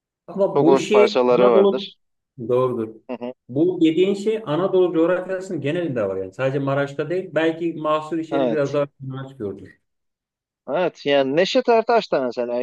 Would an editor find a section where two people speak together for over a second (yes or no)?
yes